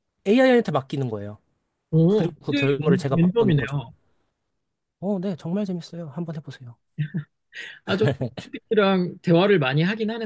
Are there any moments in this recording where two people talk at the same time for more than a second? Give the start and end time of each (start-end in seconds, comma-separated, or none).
2.1-3.8